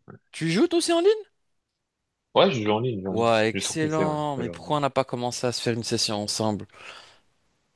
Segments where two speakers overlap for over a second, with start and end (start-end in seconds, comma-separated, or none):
3.1-4.8